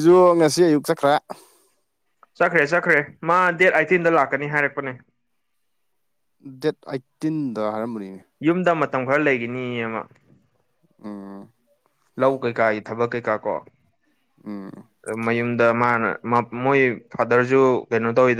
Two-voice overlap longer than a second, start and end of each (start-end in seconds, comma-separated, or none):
none